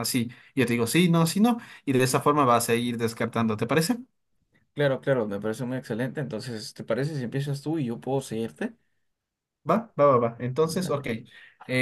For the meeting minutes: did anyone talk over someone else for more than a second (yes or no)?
no